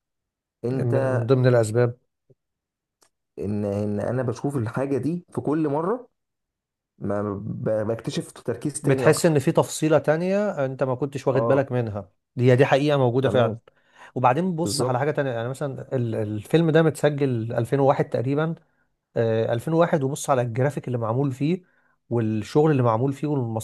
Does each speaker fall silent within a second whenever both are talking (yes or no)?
yes